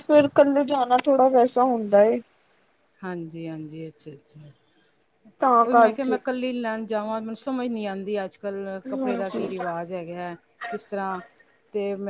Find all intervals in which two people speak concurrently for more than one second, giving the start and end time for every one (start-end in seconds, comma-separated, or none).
none